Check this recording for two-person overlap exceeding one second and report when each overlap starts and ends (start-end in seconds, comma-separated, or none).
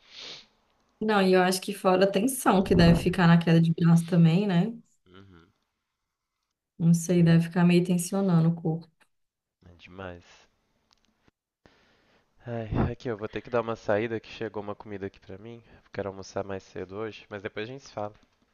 none